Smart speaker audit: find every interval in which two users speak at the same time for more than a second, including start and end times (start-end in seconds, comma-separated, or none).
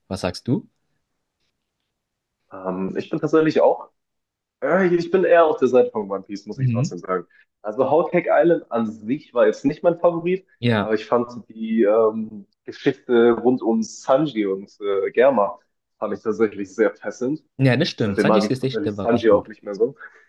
18.0-19.5